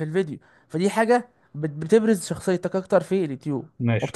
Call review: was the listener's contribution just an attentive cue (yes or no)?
no